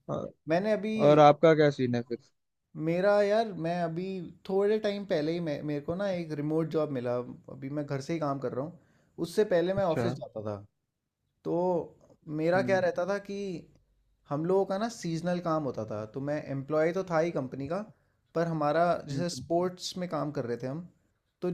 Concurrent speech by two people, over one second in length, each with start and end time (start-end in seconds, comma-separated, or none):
none